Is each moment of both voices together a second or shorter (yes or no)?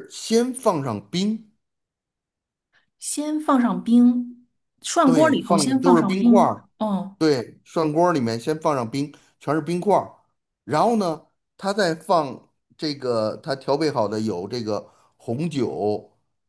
no